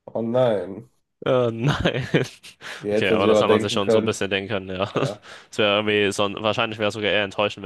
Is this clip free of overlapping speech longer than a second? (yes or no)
no